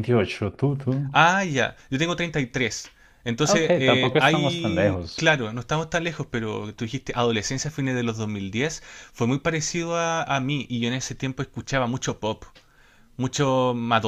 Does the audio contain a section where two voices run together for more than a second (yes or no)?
yes